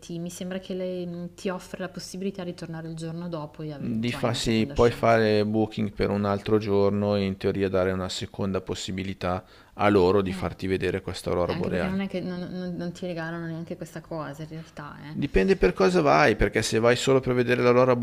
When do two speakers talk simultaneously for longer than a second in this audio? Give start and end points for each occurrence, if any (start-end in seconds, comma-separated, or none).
3.7-5.2